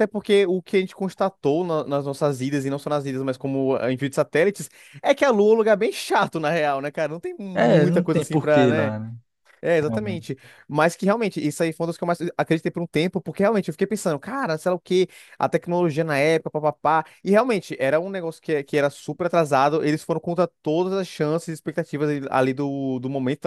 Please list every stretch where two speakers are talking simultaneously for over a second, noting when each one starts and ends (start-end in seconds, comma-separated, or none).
7.5-8.9